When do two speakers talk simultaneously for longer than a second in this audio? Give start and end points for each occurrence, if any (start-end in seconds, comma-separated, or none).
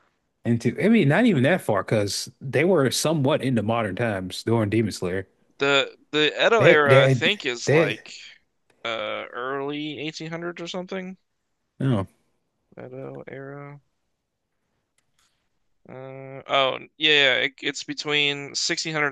6.6-8.0